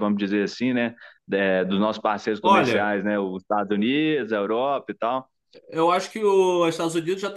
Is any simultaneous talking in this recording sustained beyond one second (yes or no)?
no